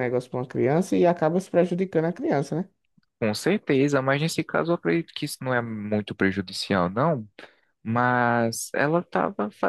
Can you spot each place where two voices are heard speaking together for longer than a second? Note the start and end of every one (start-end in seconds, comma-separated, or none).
none